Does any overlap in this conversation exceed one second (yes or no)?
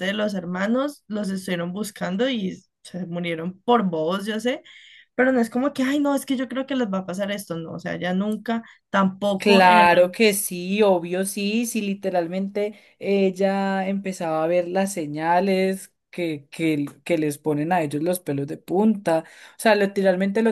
no